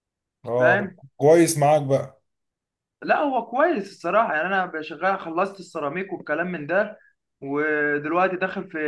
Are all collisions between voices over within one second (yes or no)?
yes